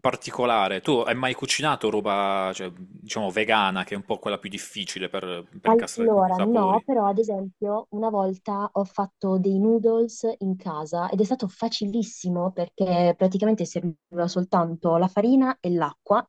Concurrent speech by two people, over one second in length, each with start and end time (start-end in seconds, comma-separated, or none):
5.6-6.8